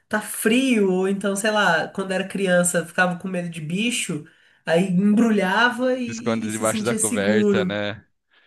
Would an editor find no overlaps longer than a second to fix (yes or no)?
no